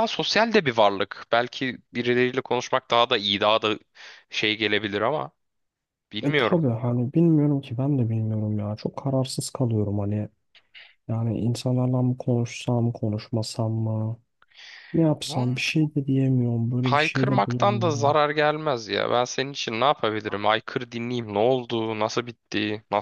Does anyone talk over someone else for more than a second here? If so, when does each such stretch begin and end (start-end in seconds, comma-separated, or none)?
16.8-18.2